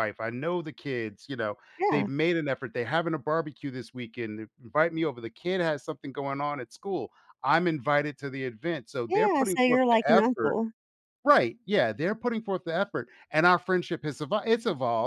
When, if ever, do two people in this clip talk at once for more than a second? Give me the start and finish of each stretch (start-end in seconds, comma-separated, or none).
9.1-10.6